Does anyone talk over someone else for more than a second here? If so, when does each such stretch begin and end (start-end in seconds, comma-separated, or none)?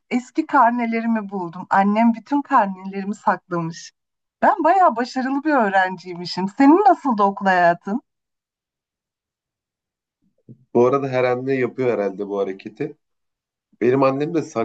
none